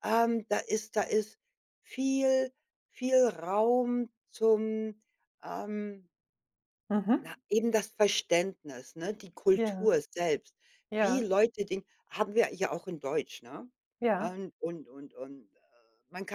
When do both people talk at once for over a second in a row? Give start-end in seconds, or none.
none